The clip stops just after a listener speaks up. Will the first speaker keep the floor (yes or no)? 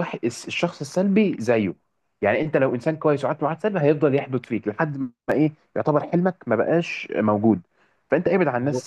yes